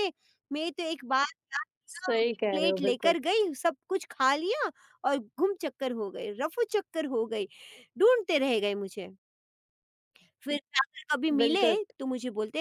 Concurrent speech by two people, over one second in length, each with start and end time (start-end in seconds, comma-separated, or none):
1.9-3.1